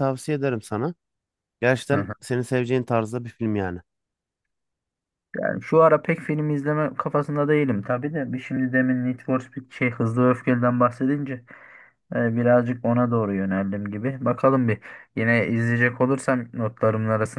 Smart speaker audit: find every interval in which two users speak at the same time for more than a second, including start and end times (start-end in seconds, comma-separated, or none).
none